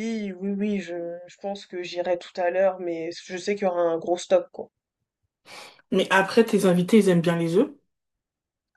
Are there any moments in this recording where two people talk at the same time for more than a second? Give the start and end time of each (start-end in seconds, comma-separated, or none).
none